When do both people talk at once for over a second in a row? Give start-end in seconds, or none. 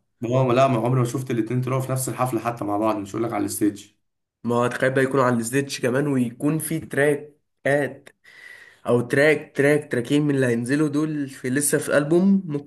none